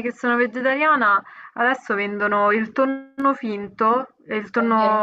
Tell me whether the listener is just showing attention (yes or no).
yes